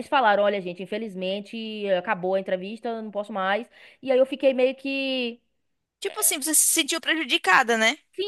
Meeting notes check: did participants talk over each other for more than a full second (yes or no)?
no